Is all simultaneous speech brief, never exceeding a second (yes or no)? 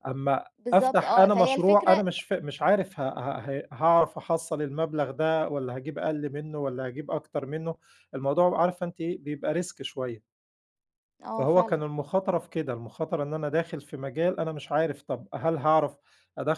no